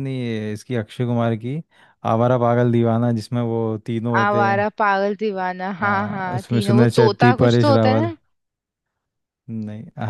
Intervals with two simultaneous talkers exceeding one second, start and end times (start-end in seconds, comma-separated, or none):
5.8-8.1